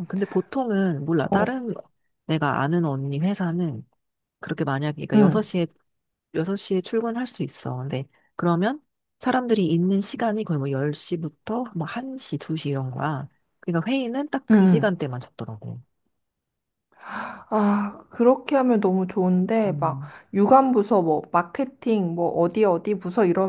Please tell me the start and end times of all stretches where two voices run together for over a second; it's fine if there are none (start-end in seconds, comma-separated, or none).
none